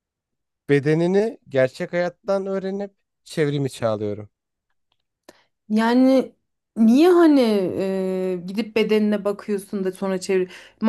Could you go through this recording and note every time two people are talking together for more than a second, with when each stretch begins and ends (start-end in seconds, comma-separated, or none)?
none